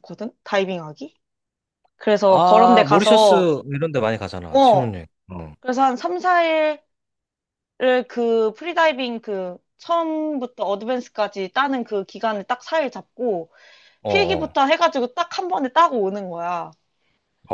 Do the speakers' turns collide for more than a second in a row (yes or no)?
yes